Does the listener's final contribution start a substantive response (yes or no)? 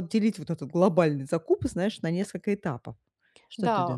yes